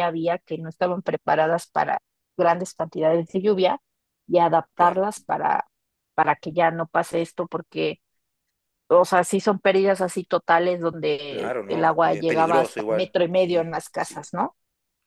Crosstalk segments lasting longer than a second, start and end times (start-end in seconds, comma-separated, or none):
11.3-14.3